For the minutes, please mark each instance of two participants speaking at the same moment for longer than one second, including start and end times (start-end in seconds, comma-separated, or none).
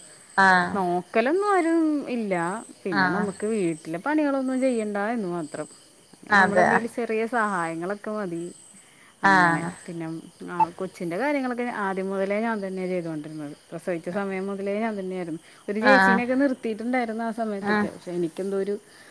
none